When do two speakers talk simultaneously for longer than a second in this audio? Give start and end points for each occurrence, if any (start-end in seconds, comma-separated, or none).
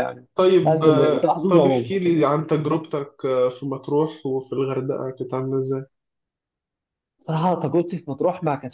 0.7-1.9